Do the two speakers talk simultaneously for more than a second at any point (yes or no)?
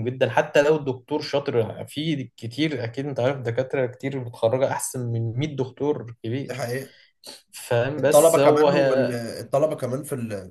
yes